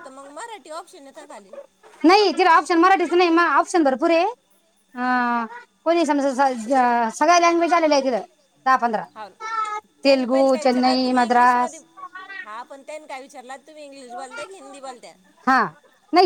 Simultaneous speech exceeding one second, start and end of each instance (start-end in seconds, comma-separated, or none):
10.0-11.8